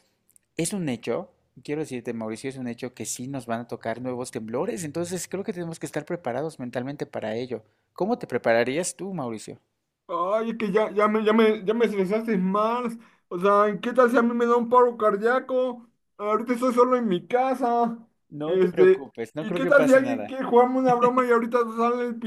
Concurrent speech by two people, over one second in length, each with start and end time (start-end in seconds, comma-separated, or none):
18.4-20.3